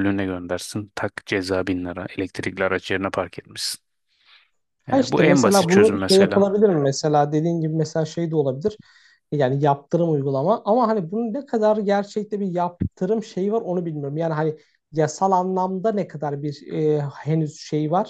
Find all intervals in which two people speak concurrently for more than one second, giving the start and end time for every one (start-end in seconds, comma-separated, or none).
4.9-6.5